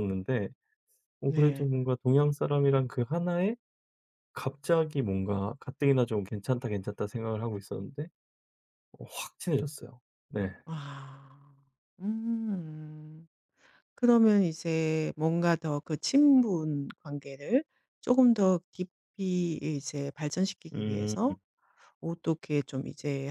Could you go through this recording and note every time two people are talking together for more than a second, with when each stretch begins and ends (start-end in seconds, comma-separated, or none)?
none